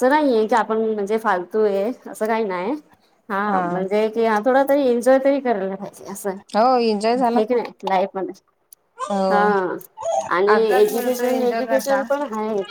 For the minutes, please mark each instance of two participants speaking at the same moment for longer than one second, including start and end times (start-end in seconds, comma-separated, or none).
10.5-12.0